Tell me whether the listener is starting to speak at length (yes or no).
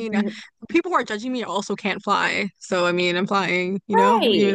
yes